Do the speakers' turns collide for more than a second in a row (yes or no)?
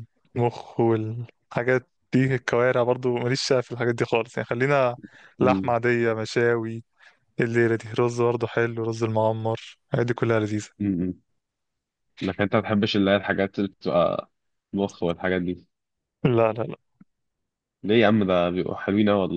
no